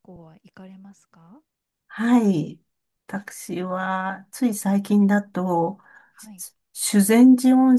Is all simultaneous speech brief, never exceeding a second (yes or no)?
yes